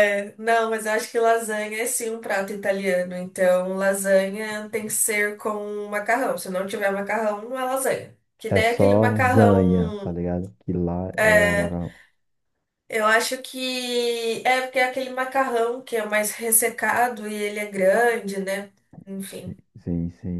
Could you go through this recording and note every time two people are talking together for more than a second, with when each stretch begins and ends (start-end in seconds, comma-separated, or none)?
8.5-10.2